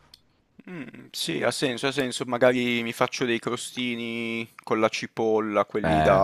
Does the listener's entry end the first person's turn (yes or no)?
no